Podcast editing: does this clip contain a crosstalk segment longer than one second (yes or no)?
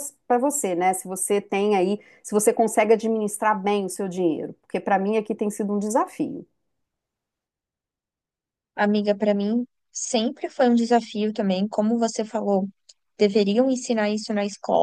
no